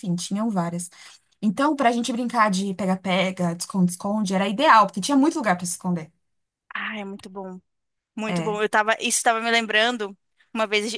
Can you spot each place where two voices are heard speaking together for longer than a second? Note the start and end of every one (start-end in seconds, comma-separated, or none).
none